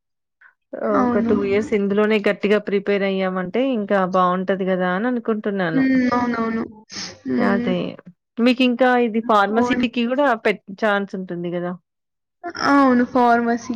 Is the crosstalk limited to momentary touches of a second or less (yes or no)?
yes